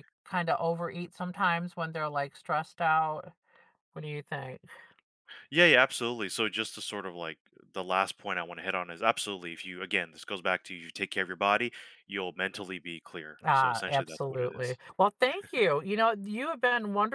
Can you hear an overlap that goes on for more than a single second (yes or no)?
yes